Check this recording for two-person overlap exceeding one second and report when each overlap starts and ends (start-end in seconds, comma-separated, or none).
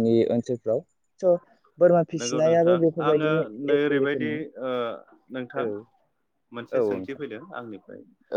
2.2-4.3